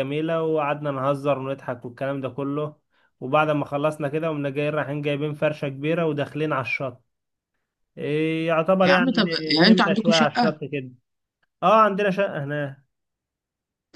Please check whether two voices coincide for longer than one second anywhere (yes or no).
yes